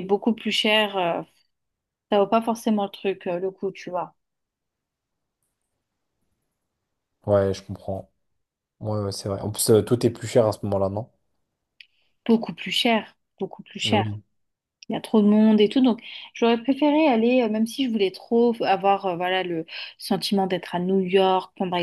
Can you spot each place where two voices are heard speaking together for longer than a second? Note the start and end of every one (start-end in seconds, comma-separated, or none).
none